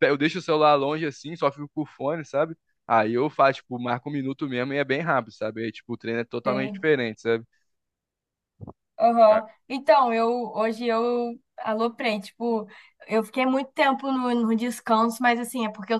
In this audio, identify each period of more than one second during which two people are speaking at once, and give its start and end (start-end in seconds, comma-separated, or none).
none